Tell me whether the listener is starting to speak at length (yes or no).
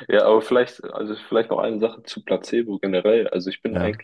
no